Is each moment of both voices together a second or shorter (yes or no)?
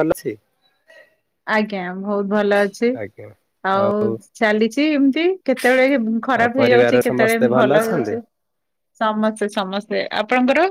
no